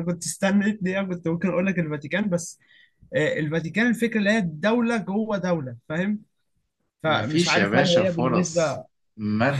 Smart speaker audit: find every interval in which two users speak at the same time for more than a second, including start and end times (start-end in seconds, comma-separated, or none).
7.1-8.8